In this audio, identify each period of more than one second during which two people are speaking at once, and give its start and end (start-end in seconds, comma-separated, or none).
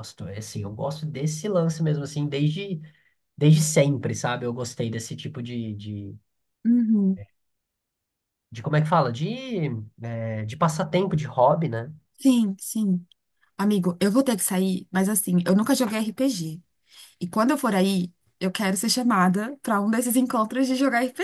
none